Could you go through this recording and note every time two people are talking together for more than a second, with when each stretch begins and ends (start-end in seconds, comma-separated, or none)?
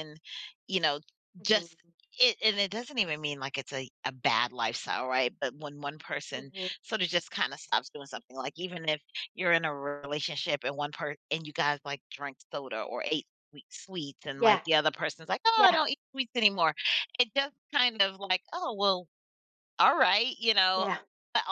none